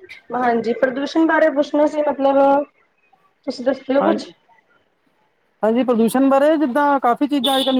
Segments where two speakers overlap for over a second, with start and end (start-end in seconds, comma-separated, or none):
none